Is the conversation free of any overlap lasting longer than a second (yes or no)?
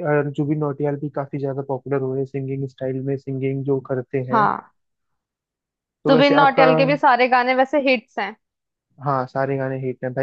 yes